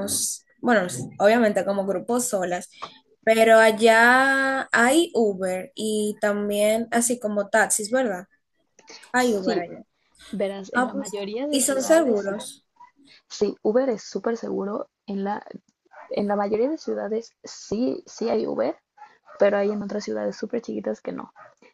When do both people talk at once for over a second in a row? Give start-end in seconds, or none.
10.7-12.3